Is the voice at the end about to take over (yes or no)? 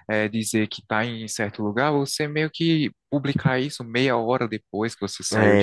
yes